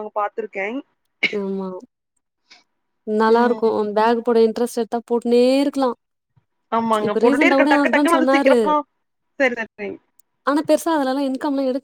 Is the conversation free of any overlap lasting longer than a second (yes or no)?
no